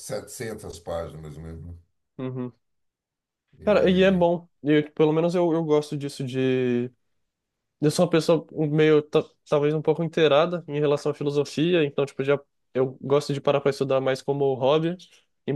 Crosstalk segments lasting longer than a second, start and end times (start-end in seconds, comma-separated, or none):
none